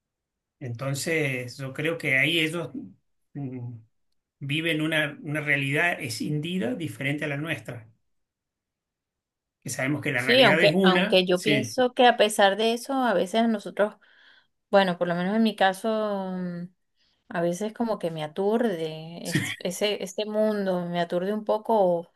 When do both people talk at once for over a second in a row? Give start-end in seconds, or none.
10.2-11.8